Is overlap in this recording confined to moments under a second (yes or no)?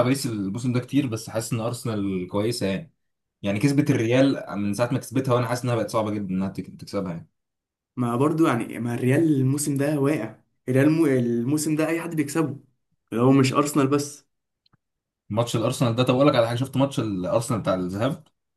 yes